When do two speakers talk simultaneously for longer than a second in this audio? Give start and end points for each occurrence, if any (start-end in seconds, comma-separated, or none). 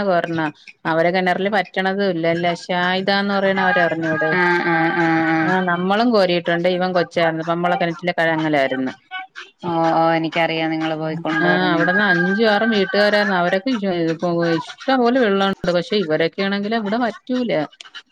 none